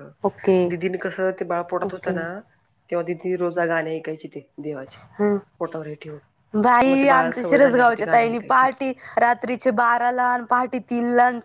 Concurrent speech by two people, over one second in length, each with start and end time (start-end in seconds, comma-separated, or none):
6.9-8.7